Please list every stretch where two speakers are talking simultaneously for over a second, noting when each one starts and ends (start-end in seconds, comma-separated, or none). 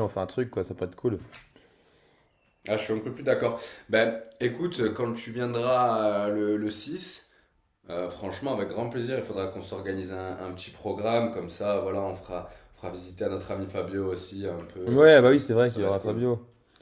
14.8-16.2